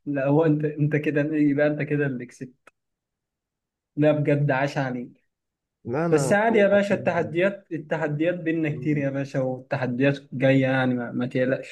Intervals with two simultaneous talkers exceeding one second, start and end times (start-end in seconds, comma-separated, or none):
6.1-7.3